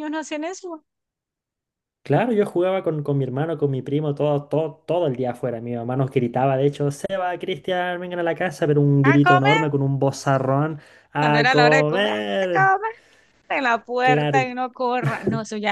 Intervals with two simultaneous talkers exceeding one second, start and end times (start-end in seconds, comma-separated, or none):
11.2-12.7